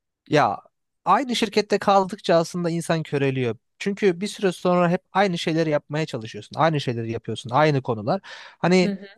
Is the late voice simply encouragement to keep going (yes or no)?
yes